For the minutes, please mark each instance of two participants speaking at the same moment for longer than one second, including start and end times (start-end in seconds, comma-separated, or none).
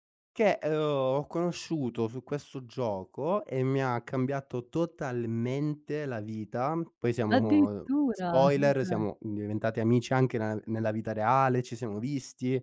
7.3-9.0